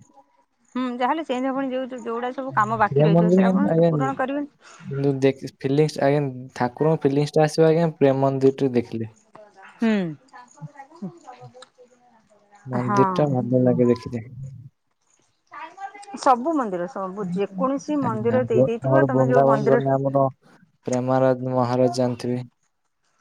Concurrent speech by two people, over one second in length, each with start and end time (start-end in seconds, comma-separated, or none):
none